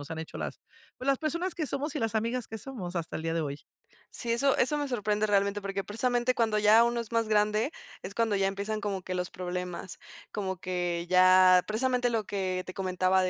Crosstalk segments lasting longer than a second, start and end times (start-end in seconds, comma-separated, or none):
none